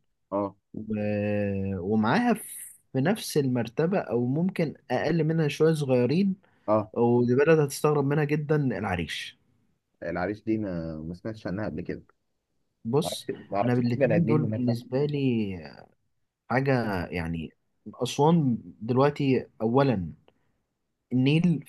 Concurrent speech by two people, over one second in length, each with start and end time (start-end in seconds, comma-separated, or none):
13.0-14.6